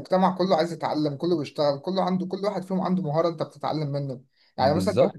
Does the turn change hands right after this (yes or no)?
no